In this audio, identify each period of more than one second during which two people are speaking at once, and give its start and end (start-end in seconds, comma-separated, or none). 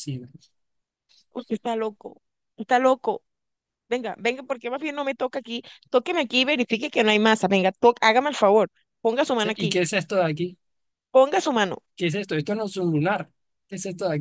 none